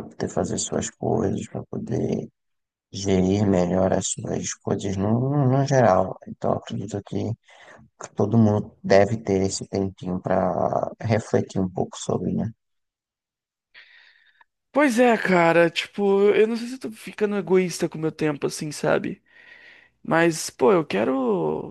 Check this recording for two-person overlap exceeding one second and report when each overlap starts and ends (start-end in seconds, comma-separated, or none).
none